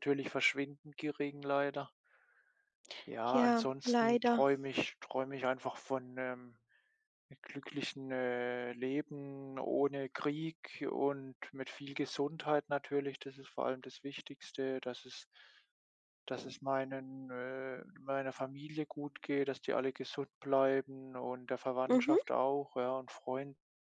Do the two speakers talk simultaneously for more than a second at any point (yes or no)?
yes